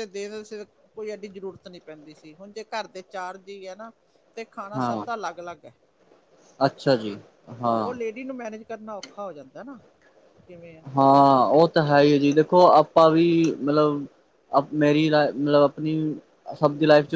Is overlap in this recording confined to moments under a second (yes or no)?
yes